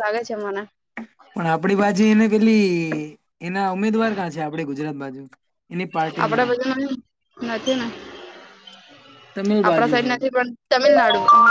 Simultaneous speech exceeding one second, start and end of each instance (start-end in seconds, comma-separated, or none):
none